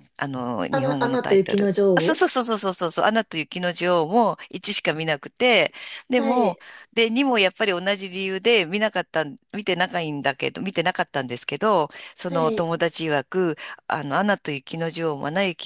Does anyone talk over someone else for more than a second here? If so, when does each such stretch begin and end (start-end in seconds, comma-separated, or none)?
0.7-2.2